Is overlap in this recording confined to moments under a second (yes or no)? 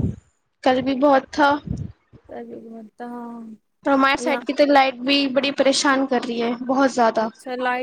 yes